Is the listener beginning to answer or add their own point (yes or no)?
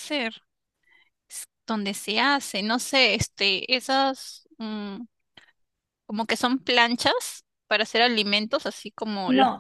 yes